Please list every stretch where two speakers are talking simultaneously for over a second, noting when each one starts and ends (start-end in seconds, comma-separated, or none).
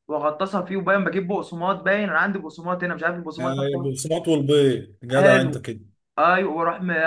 none